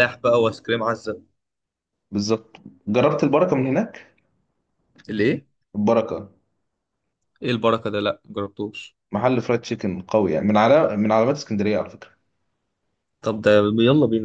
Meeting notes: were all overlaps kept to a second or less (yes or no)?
yes